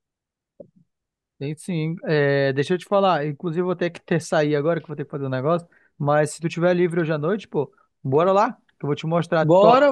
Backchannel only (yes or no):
no